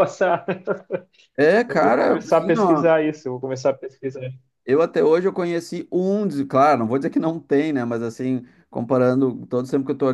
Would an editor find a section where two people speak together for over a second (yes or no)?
yes